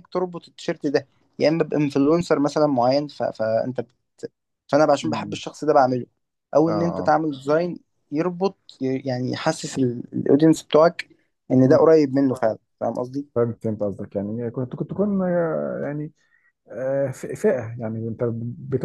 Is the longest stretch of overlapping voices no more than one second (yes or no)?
yes